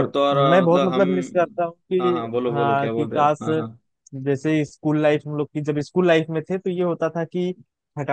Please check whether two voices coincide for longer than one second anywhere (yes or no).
yes